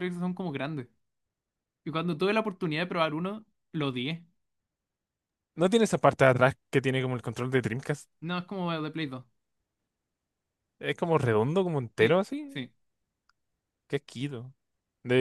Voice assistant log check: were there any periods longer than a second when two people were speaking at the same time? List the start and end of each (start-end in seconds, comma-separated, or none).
none